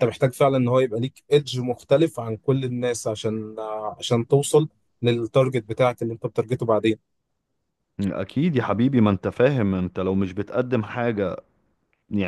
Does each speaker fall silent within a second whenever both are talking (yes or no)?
yes